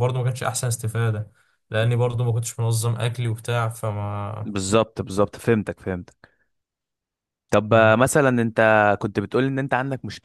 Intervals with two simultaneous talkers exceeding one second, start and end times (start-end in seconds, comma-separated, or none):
none